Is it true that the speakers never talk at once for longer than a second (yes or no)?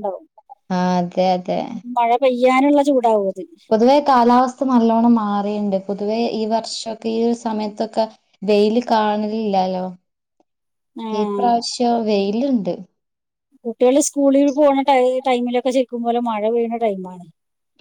yes